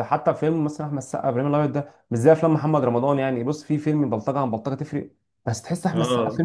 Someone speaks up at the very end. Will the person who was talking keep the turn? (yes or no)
yes